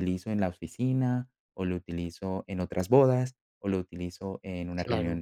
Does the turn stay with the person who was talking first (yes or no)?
yes